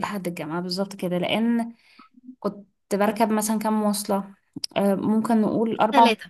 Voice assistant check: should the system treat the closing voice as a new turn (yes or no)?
no